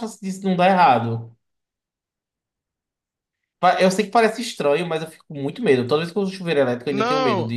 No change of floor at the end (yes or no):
no